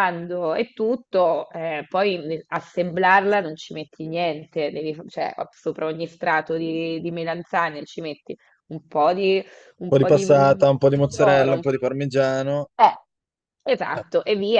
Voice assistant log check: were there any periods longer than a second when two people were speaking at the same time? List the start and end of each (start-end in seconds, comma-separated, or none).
9.9-11.6